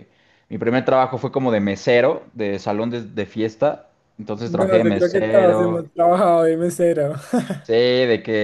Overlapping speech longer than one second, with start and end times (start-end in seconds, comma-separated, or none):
4.4-5.9